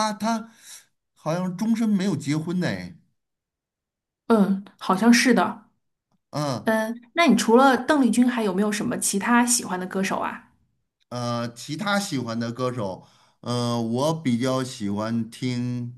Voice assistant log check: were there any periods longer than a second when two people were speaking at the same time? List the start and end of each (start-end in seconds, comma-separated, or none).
none